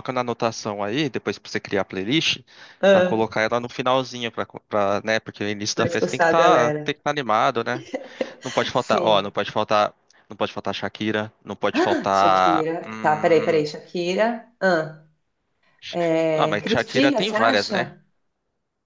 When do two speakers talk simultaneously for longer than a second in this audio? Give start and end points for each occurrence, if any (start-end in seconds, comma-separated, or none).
5.7-7.0, 11.8-13.7, 16.3-17.9